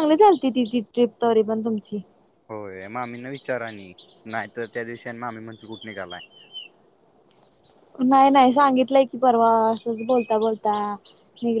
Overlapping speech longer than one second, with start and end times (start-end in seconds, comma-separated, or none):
none